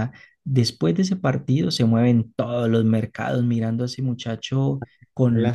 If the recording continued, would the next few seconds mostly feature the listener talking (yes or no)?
yes